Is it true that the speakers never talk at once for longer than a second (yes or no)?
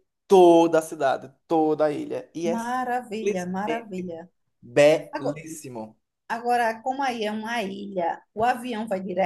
no